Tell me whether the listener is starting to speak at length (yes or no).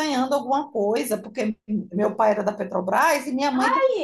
no